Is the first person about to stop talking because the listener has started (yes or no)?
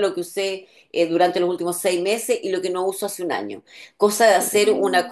no